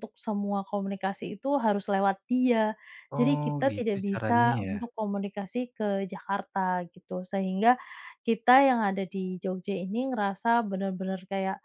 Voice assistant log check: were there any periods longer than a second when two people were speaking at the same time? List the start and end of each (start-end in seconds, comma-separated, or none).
3.2-4.8